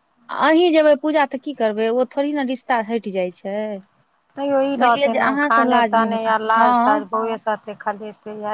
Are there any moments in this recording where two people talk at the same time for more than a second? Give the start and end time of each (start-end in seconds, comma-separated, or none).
4.8-7.0